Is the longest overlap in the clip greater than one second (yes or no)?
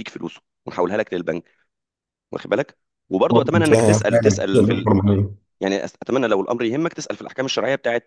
yes